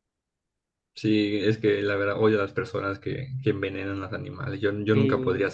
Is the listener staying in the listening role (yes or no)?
no